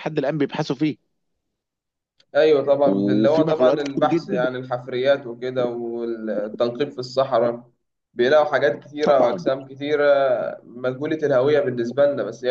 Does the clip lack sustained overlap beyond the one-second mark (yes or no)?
no